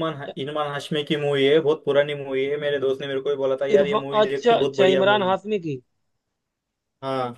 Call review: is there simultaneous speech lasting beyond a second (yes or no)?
yes